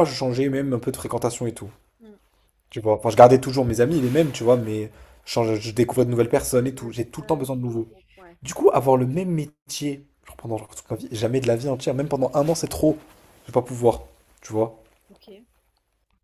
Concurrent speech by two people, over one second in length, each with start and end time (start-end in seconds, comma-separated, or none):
6.6-7.9